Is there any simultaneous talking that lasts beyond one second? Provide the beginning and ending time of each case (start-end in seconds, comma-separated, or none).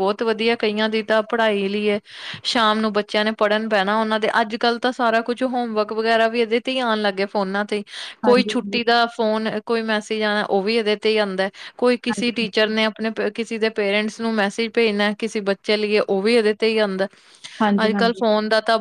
none